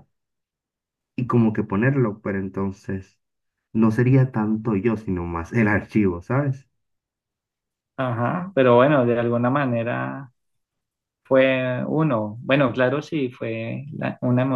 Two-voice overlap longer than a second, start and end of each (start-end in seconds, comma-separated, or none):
none